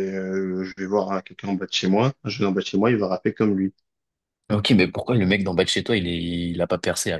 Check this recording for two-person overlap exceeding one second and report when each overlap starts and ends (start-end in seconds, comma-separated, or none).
none